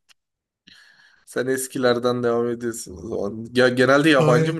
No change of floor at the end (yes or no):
no